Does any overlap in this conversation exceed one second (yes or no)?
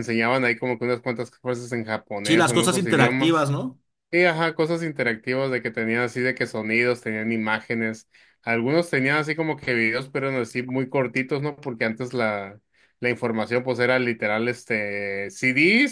yes